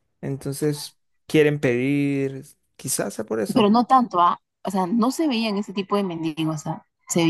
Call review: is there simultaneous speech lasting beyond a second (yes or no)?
no